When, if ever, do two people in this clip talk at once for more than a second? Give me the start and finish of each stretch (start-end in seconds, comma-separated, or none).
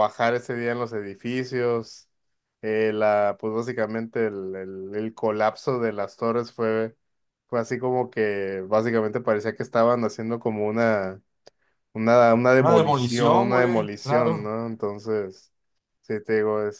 12.6-14.6